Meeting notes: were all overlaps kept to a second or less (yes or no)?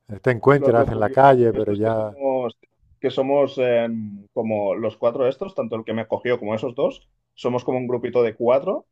no